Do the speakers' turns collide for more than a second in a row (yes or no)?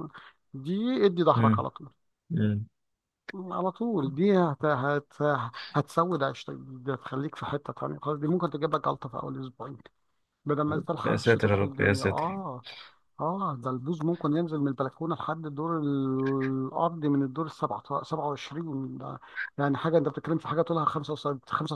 yes